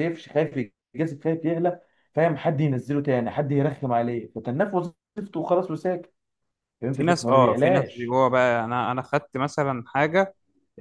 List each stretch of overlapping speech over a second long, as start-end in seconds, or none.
6.9-8.2